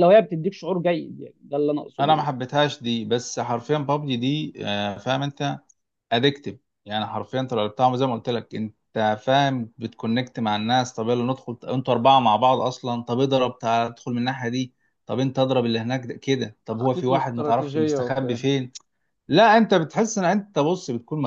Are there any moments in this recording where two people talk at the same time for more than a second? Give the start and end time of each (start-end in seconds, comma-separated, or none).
16.7-18.4